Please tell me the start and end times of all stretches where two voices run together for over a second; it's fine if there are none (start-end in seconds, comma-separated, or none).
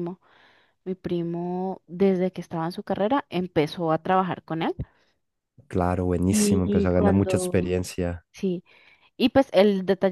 6.3-7.7